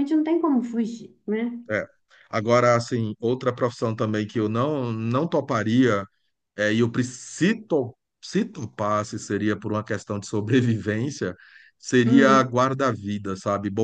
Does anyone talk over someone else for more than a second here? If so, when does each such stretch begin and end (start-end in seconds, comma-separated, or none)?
none